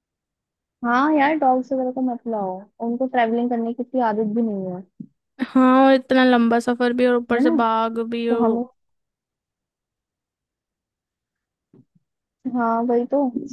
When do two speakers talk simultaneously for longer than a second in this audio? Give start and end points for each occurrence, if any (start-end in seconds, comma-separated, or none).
none